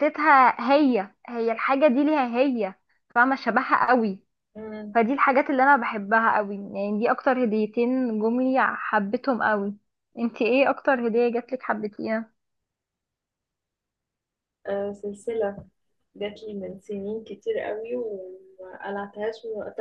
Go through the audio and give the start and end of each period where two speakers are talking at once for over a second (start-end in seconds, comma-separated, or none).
none